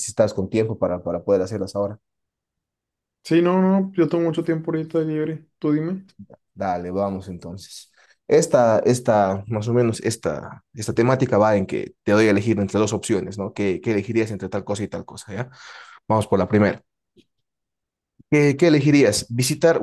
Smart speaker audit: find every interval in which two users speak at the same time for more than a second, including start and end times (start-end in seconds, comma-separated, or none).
none